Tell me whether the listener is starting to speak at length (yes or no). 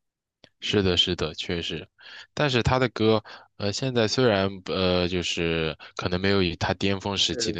no